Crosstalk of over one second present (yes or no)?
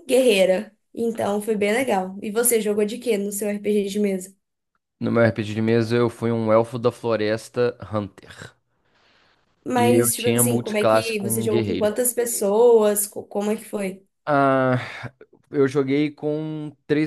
yes